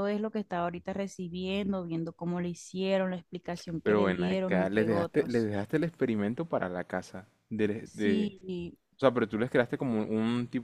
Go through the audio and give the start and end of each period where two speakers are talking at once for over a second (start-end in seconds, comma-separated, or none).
3.8-5.5